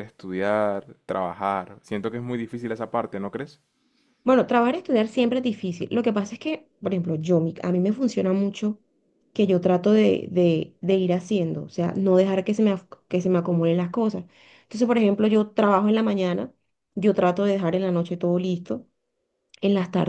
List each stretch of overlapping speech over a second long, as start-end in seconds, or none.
none